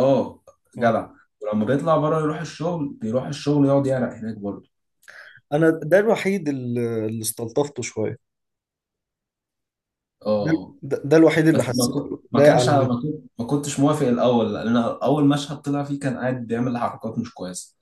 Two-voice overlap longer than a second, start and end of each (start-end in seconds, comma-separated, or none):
11.5-13.0